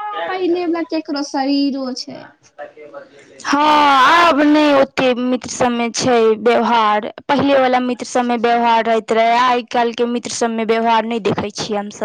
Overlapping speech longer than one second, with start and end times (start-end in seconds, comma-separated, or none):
none